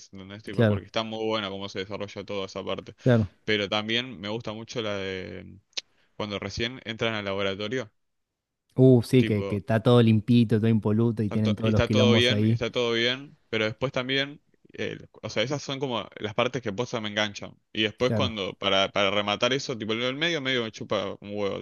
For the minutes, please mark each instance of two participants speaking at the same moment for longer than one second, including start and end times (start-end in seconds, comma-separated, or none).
11.2-12.6